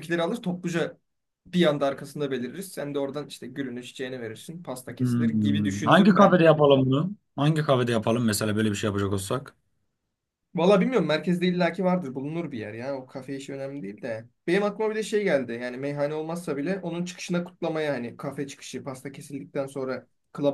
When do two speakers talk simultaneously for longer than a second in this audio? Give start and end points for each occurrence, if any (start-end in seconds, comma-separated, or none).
5.0-6.4